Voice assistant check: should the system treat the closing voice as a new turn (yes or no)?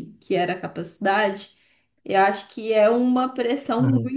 no